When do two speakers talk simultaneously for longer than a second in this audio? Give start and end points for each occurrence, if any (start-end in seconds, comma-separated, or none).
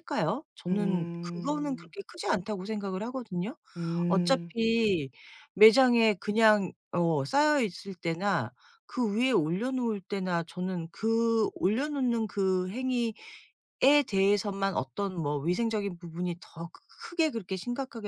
0.7-1.9